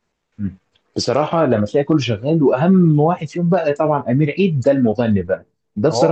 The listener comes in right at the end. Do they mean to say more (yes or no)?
no